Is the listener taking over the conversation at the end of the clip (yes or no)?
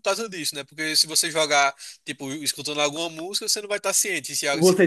yes